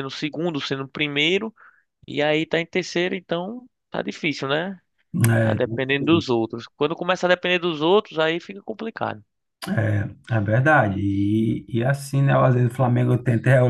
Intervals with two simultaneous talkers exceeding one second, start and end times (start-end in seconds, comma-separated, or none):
none